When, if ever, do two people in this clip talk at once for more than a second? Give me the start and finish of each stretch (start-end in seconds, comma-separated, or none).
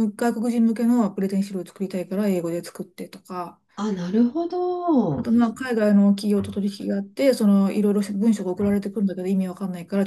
none